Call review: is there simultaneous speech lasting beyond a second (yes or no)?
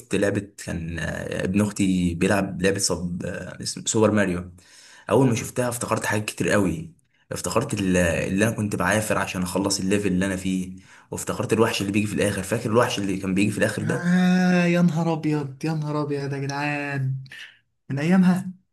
no